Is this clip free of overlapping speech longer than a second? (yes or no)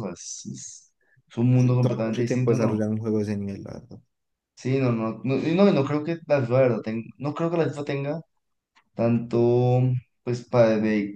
no